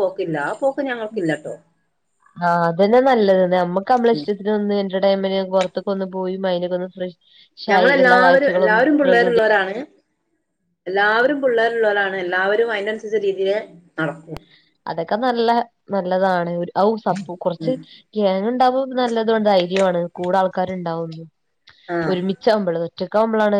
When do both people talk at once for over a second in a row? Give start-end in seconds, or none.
7.7-9.4